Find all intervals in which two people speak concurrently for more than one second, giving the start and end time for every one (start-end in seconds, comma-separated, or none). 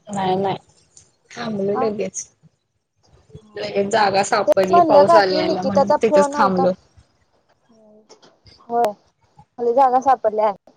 4.5-6.7